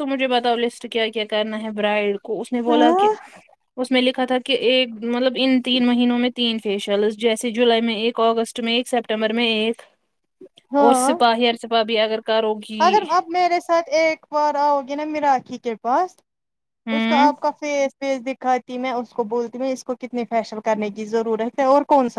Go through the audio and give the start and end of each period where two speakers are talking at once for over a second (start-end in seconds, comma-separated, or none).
none